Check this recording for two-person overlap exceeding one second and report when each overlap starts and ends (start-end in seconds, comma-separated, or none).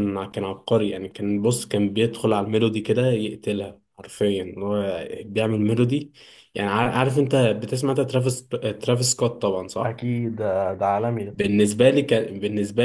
none